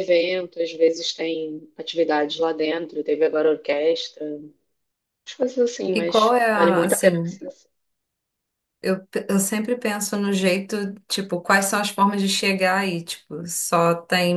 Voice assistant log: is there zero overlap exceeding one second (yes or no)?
no